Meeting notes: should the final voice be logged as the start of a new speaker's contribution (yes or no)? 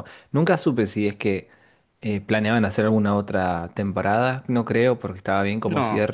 no